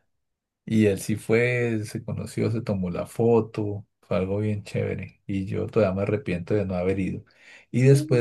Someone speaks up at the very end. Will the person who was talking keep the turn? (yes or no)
yes